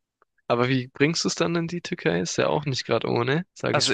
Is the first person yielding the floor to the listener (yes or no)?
yes